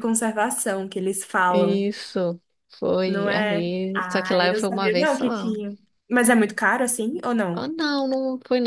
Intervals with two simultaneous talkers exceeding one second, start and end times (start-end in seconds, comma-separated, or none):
3.0-5.5